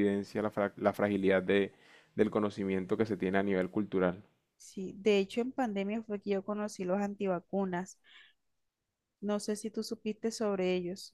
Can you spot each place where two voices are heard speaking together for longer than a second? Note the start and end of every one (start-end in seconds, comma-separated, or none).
none